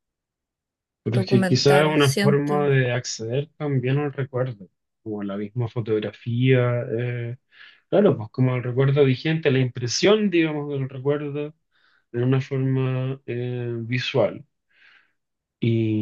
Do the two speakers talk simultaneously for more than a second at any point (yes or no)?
yes